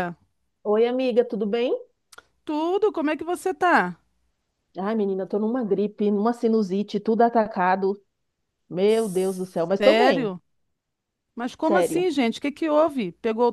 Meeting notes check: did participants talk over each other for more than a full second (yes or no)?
no